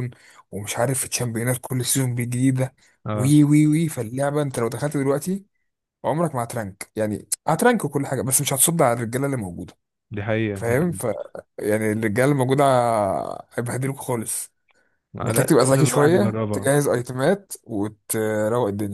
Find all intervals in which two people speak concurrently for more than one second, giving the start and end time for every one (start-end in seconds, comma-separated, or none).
15.2-16.7